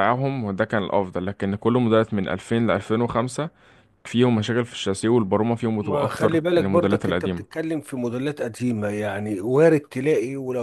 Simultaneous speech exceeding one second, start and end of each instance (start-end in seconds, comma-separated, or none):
5.8-7.6